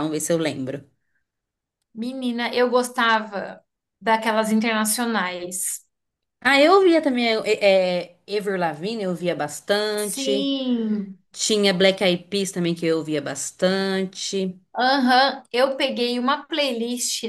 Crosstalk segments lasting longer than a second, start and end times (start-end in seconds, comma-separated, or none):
none